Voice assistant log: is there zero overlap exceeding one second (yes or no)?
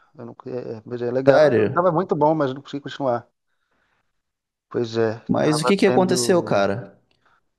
no